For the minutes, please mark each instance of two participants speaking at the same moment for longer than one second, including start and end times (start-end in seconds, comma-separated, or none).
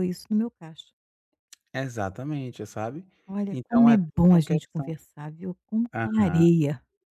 3.5-4.9